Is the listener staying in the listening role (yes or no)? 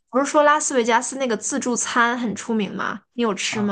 no